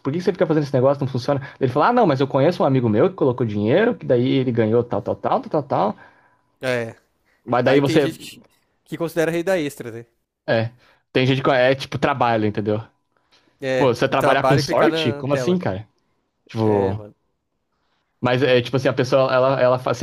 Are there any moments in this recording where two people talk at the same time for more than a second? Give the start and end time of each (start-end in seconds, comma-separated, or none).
13.8-15.6